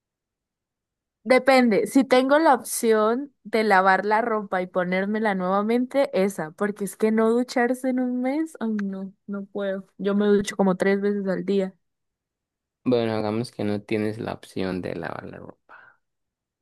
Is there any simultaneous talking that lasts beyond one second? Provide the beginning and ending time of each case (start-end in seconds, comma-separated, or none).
none